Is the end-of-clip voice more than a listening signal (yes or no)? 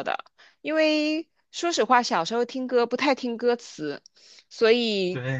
no